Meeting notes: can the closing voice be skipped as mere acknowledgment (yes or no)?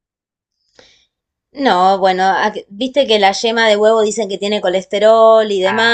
no